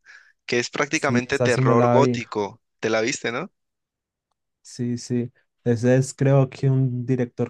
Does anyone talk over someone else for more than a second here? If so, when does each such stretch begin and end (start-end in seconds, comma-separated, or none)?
0.9-2.2